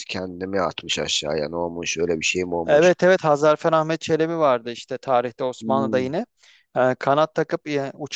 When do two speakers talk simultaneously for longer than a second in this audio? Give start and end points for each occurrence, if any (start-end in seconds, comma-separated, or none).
none